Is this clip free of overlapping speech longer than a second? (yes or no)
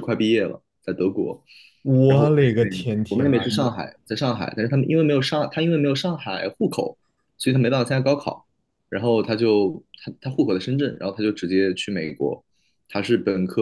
no